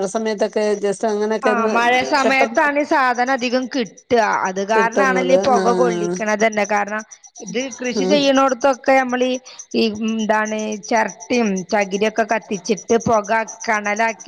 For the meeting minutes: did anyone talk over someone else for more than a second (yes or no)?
yes